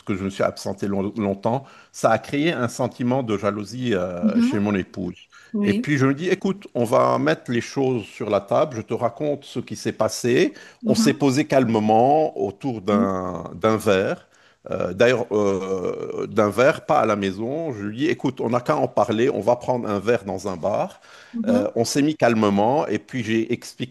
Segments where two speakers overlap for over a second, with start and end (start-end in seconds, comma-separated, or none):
none